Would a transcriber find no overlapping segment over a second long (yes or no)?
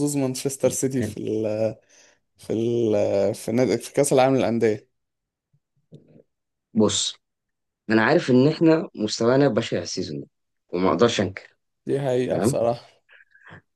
yes